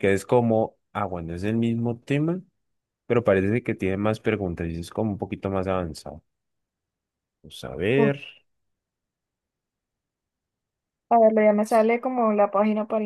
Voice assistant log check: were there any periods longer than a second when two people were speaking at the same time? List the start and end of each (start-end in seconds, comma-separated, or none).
none